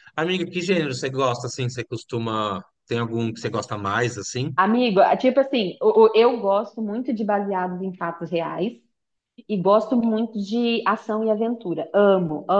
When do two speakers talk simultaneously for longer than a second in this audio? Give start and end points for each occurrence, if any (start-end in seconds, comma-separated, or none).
none